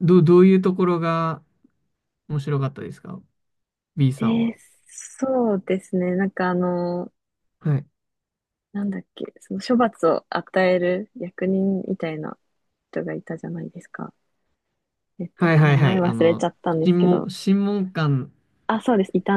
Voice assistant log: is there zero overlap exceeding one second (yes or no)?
no